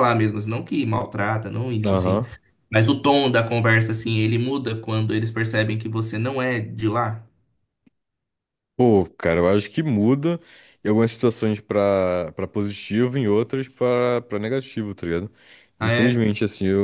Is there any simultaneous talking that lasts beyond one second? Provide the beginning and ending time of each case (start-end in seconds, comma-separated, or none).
none